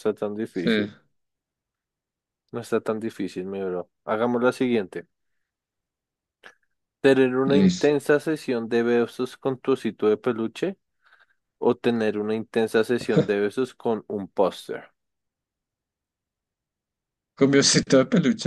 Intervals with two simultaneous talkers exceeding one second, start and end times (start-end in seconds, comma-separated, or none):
none